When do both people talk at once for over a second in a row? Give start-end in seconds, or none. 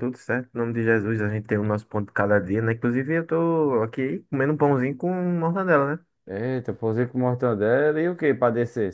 none